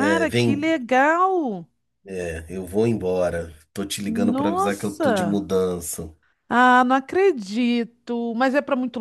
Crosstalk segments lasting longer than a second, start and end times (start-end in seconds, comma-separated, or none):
4.0-5.4